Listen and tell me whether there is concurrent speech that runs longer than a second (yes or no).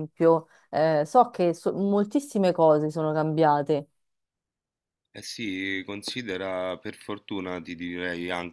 no